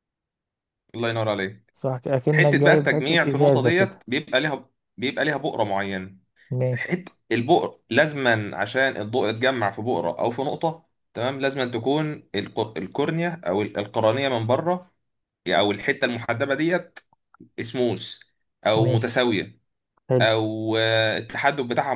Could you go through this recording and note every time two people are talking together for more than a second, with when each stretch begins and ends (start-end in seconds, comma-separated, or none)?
2.3-4.0